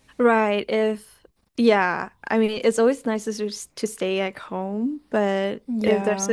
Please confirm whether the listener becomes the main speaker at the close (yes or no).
no